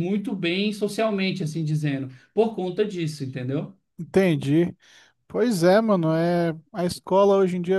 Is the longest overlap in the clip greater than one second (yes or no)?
no